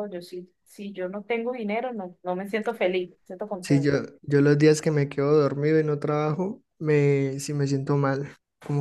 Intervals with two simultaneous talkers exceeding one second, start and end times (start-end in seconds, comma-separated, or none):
none